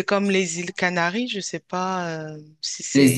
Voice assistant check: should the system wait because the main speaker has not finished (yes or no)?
no